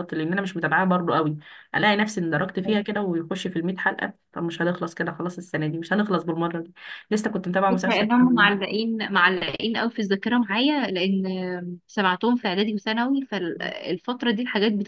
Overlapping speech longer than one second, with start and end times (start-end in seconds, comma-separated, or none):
none